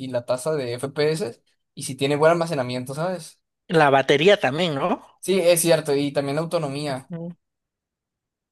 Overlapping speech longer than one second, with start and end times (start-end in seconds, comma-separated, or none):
none